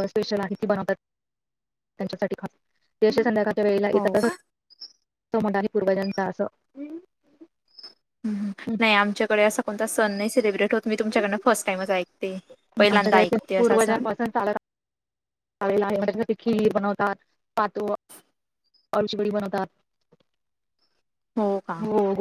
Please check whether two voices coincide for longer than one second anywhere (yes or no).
no